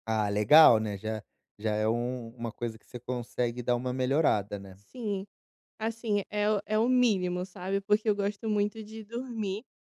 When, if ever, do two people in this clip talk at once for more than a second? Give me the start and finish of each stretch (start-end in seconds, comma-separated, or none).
none